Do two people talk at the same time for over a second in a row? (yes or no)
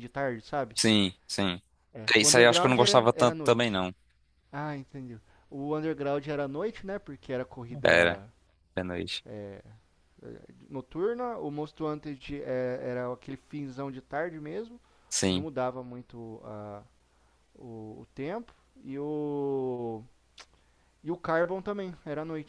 yes